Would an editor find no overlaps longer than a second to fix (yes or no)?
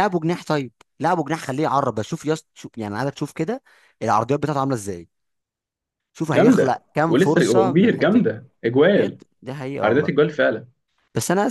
no